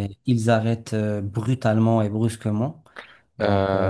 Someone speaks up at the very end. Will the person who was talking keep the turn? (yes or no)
no